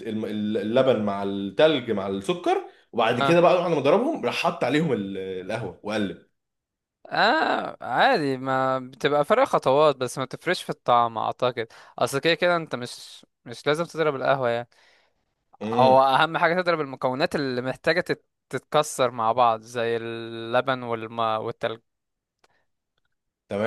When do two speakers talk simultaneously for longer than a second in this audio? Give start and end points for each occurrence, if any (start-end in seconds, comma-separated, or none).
none